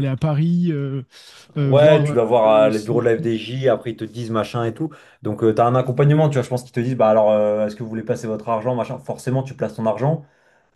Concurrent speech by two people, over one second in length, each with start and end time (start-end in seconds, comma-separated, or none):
1.6-3.4